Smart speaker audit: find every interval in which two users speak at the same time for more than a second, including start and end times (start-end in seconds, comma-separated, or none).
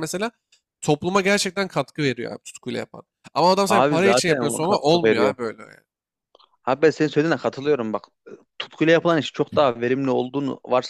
3.7-5.3